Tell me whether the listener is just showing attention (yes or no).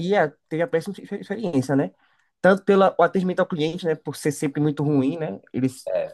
yes